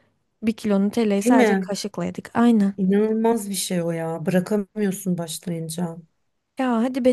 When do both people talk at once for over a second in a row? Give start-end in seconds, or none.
none